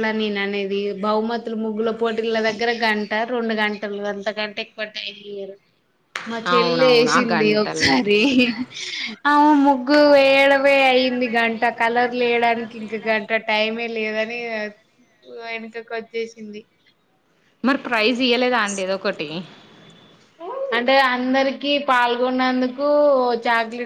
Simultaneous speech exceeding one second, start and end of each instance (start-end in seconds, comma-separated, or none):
6.6-8.0